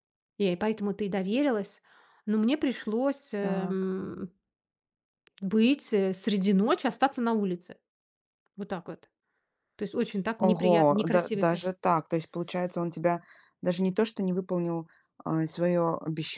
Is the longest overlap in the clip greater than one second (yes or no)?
yes